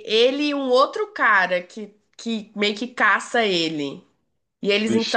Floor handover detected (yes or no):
no